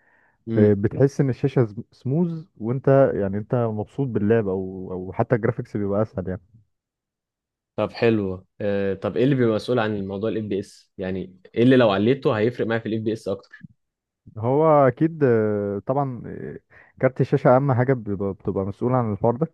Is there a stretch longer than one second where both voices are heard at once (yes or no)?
no